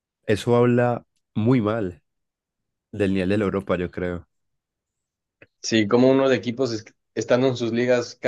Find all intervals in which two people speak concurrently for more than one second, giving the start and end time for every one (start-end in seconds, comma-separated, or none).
none